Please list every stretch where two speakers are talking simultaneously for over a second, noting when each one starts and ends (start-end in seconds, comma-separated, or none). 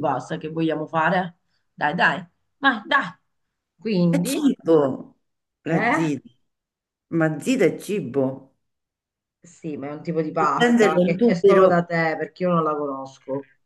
10.4-11.8